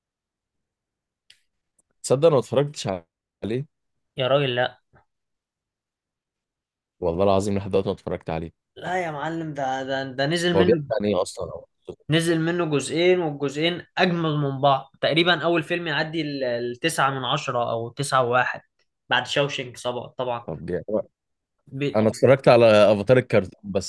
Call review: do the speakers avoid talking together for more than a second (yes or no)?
yes